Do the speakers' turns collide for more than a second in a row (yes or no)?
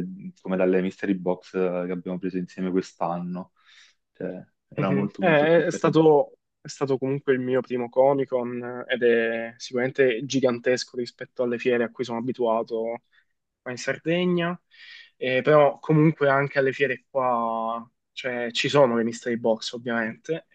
yes